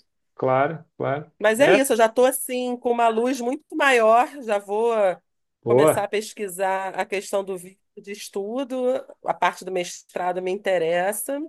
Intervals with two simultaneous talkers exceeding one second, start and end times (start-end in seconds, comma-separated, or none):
none